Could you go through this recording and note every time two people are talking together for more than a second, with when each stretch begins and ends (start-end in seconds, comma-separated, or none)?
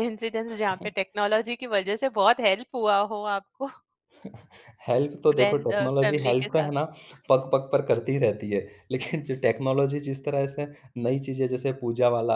5.3-6.7